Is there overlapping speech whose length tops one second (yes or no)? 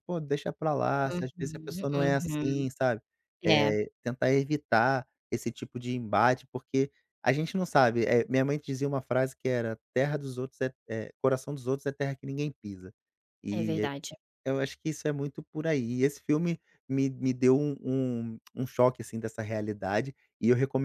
yes